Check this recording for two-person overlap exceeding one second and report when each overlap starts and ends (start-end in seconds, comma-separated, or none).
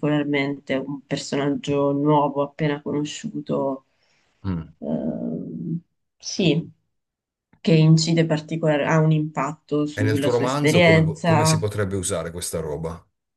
9.9-11.6